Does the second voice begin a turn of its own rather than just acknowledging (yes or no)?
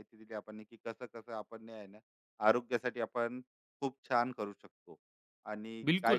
yes